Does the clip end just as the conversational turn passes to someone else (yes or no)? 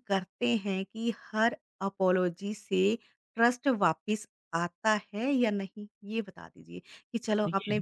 no